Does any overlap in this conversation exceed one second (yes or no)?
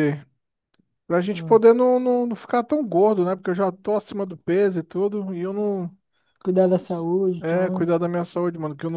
no